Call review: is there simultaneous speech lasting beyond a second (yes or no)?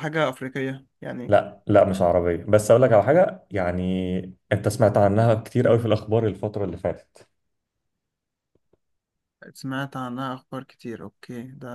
no